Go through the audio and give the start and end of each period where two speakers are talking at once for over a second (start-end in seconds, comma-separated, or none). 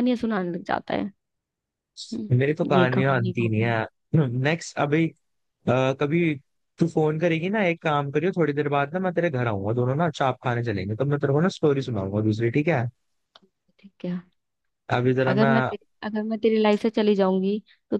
2.3-3.8